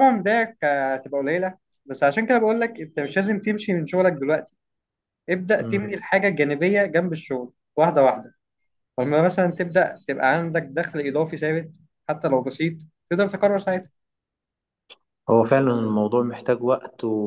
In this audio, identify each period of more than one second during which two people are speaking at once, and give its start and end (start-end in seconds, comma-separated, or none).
none